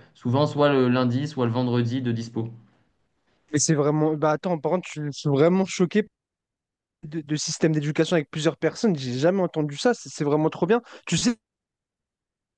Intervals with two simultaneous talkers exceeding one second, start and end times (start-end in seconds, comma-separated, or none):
none